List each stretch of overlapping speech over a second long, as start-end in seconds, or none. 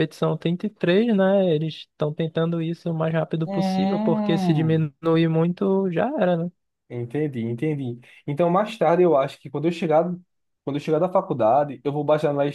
3.5-4.9